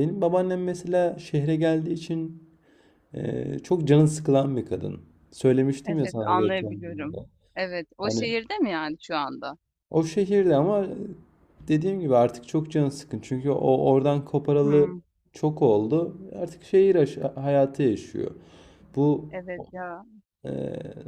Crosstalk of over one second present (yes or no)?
yes